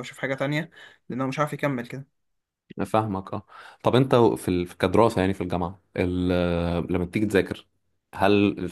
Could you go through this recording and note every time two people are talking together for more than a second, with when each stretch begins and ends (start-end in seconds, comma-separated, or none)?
none